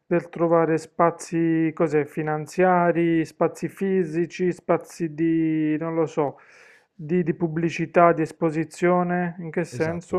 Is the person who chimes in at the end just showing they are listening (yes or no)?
no